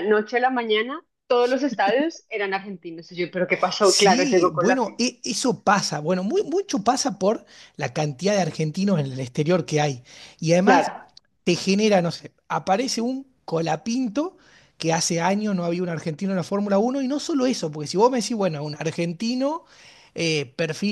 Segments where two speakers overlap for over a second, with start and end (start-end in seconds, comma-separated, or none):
3.8-5.0